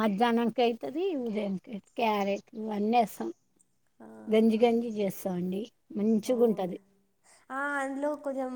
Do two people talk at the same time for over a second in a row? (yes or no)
no